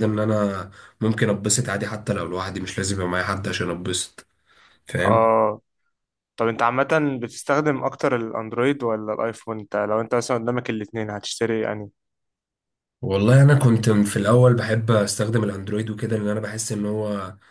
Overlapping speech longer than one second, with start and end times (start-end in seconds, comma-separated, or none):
none